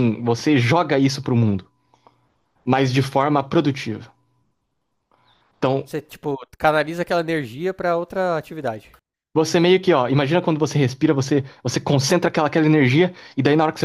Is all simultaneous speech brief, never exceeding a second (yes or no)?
yes